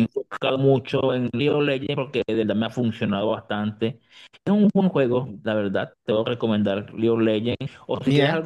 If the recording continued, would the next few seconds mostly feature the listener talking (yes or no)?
no